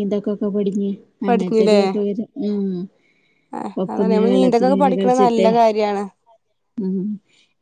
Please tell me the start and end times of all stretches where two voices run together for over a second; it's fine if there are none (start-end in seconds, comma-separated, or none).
3.8-5.5